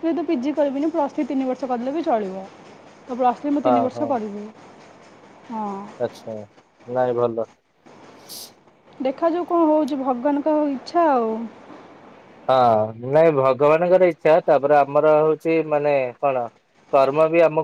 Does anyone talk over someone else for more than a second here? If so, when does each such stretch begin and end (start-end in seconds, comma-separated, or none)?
none